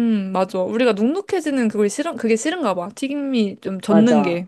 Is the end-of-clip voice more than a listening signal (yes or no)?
yes